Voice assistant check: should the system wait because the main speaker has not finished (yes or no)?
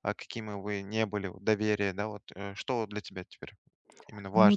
no